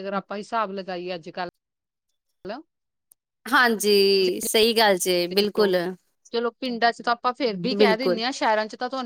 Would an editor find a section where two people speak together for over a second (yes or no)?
no